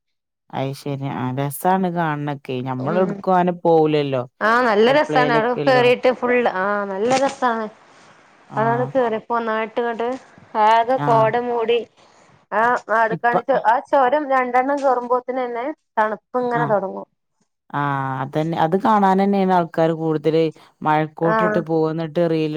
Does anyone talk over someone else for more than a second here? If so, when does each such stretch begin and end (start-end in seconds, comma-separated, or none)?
none